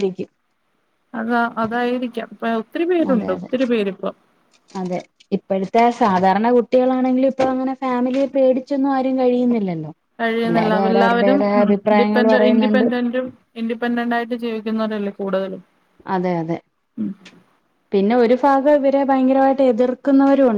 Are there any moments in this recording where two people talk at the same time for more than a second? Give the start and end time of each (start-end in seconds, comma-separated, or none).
10.4-12.8